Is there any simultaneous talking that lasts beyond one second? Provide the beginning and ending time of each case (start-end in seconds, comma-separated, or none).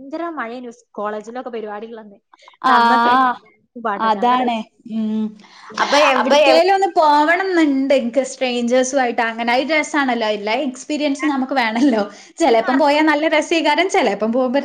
none